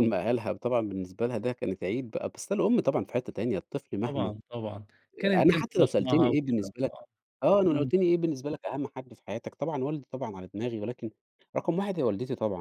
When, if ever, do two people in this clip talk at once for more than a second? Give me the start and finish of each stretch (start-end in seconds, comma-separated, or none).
5.3-6.6